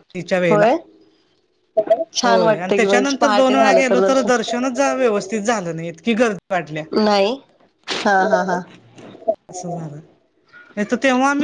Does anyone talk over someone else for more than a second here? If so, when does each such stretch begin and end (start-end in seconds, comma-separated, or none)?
2.2-4.3